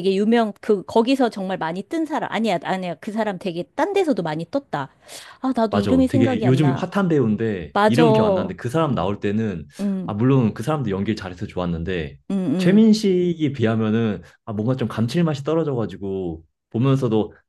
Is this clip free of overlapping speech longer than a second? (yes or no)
no